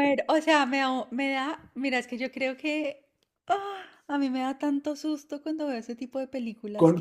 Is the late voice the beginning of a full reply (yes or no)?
yes